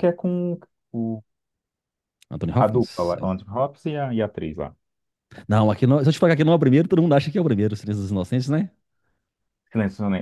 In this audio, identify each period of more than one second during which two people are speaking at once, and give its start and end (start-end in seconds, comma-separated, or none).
none